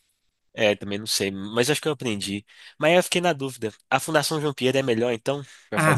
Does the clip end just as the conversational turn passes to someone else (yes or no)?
yes